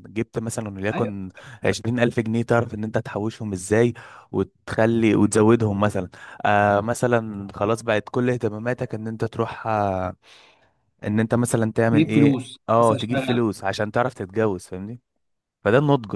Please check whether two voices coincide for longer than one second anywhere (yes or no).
yes